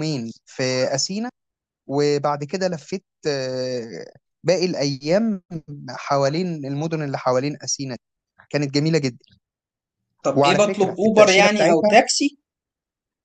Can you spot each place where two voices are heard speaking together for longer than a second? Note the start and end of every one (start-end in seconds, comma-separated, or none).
10.3-11.9